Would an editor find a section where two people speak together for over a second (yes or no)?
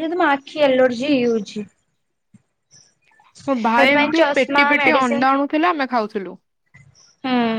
yes